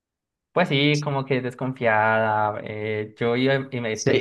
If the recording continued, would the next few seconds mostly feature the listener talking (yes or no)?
yes